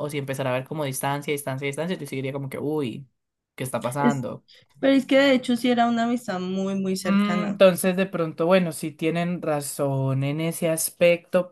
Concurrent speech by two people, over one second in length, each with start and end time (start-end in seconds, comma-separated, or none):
none